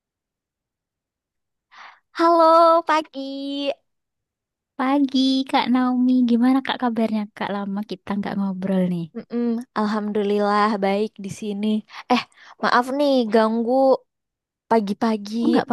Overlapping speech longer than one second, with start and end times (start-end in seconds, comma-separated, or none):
none